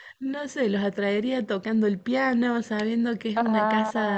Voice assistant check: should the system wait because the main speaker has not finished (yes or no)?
yes